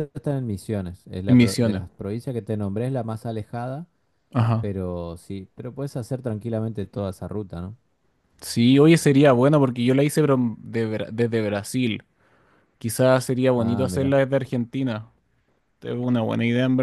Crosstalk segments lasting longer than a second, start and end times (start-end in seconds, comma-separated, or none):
none